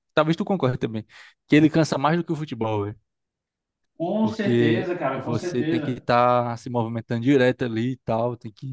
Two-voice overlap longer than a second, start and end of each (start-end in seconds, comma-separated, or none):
4.2-6.1